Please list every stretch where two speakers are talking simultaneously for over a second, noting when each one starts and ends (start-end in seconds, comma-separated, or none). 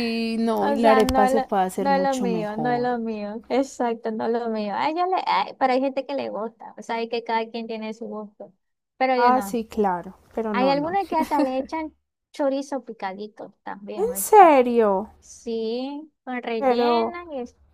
0.6-3.0